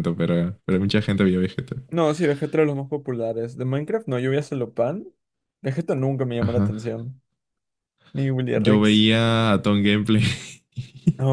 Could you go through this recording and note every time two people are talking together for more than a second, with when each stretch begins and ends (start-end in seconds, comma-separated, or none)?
none